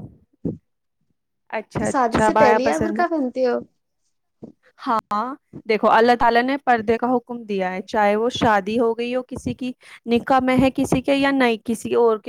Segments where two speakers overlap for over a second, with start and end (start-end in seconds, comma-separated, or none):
1.8-3.0